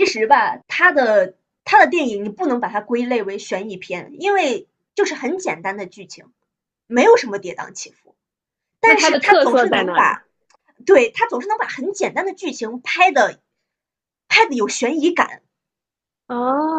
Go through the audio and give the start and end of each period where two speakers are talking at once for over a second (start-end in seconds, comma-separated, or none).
8.8-10.2